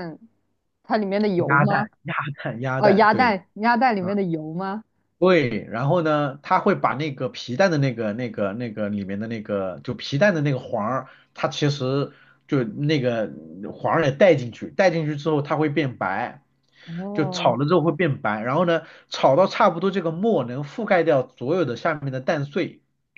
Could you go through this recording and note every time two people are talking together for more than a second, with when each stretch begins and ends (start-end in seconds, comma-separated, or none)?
none